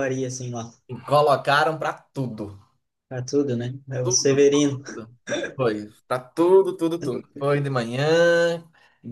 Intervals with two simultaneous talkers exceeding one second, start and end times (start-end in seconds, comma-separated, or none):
none